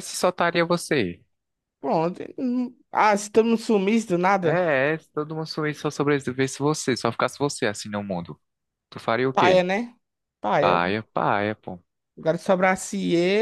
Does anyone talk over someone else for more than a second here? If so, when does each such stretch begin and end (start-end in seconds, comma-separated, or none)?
none